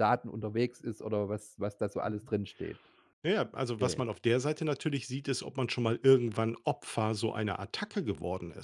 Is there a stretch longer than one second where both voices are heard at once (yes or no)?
no